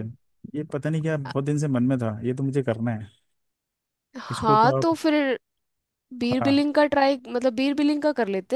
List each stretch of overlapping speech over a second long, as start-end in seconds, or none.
none